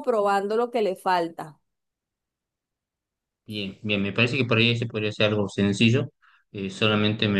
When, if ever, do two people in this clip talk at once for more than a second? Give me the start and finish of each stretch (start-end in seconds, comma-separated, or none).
none